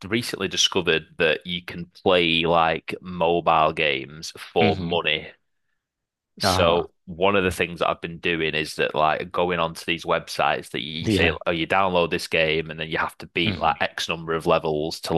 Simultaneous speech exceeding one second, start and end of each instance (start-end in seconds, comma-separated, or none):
none